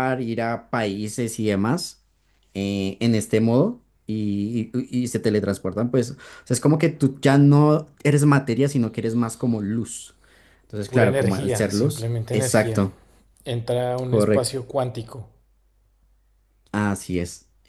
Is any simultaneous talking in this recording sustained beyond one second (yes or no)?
yes